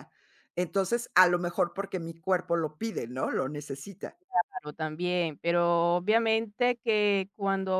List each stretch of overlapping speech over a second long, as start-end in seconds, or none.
none